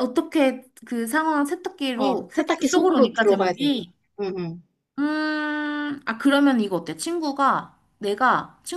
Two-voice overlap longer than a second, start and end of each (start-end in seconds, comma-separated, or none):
1.9-3.7